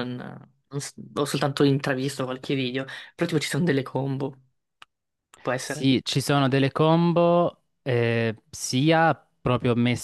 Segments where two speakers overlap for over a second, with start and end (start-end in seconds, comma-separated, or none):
none